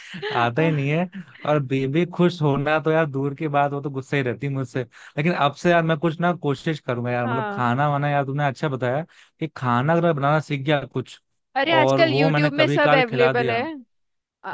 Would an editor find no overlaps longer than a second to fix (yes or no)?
no